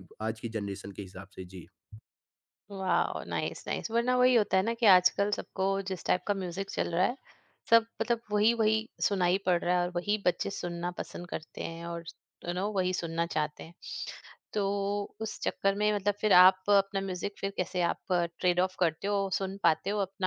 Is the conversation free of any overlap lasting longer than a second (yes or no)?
yes